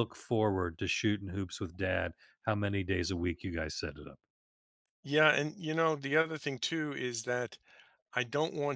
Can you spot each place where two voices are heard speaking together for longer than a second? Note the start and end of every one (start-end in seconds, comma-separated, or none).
none